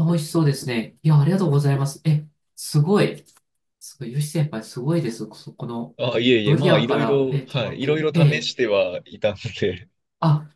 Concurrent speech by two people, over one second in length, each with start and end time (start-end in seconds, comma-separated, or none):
6.5-8.6